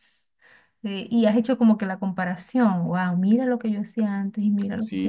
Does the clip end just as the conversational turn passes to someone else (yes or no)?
yes